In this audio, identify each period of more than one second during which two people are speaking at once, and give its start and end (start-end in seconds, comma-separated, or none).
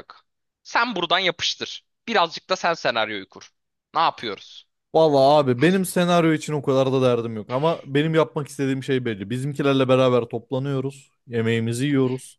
none